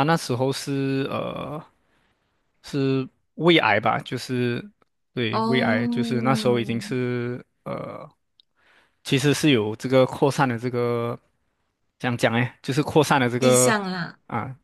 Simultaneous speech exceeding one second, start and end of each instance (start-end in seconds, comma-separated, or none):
5.3-6.8